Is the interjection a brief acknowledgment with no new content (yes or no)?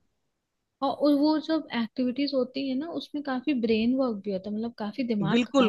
no